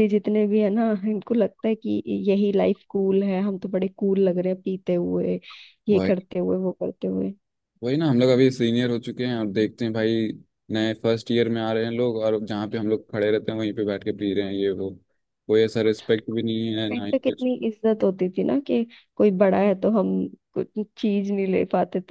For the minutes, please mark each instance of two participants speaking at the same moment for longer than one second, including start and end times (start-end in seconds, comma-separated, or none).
none